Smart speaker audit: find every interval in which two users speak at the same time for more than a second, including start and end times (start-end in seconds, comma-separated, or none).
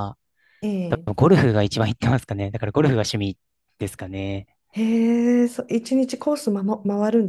none